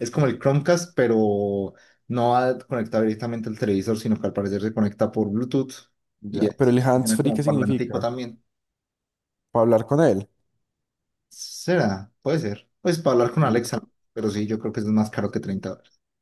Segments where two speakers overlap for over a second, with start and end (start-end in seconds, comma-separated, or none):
6.3-8.1